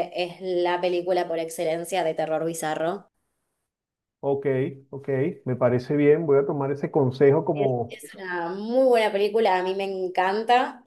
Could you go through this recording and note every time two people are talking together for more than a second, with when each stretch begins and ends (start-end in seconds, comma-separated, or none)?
none